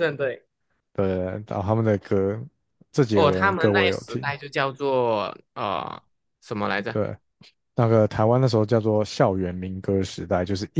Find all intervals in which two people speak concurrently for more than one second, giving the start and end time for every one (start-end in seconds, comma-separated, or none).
3.1-4.3